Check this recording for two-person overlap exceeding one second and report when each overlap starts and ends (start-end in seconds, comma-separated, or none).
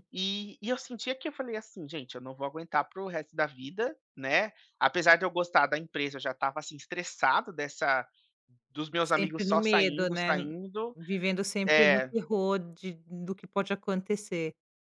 9.0-10.3